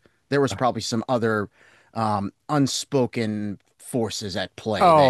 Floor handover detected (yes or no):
yes